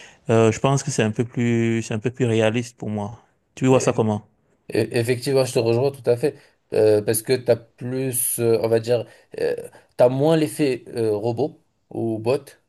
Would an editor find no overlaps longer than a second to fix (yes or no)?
yes